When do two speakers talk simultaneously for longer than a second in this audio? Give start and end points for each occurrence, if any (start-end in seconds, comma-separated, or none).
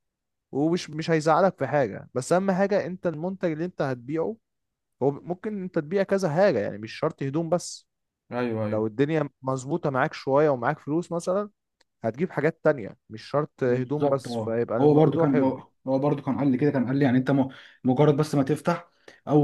13.7-15.6